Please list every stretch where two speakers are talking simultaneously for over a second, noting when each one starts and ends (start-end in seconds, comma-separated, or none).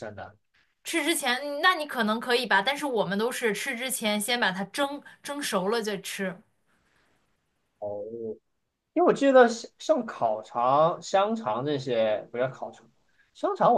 none